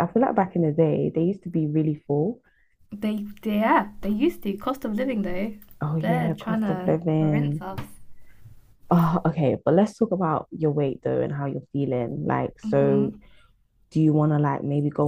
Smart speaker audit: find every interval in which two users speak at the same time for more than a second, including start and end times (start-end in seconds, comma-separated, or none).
6.0-7.6